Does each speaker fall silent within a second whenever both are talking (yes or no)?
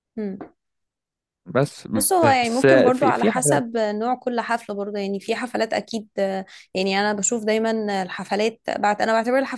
no